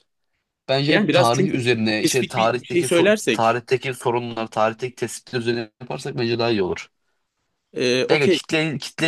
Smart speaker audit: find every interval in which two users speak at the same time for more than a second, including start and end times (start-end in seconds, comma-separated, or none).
0.9-3.6